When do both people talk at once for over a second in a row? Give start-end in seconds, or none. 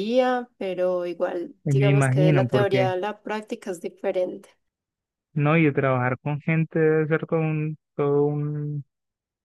1.6-2.9